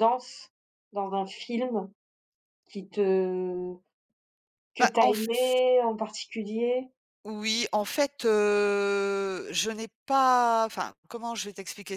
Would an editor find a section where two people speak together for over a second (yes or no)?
no